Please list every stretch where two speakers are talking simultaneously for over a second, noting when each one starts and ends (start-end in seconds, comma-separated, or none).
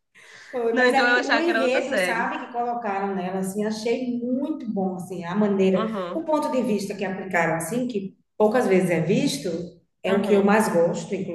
0.7-2.3